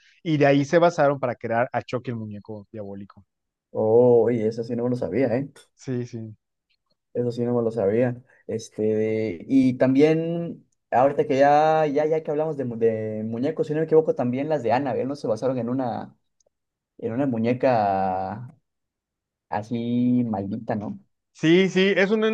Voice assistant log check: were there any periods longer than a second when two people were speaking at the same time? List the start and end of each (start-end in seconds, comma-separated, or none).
none